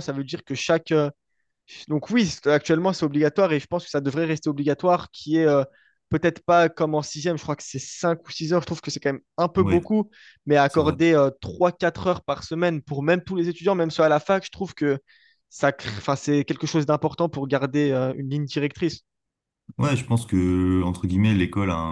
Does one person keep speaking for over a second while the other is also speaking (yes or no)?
no